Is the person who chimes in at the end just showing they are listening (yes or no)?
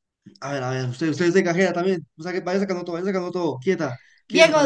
no